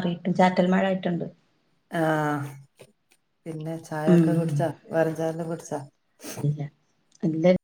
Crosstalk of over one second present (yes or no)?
no